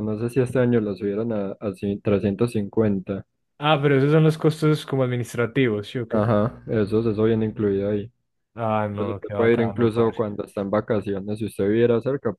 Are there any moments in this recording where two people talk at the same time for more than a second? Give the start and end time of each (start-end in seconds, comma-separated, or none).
8.9-10.2